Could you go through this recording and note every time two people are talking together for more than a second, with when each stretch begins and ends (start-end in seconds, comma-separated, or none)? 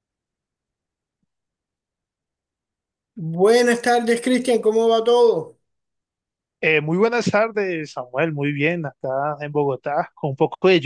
none